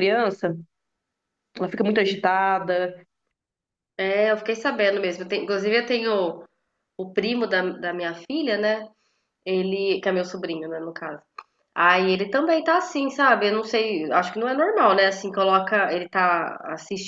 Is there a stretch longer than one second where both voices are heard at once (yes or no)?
no